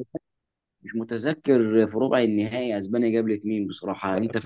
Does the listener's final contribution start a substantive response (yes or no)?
yes